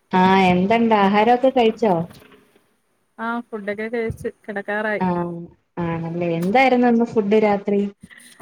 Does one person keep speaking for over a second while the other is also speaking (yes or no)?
no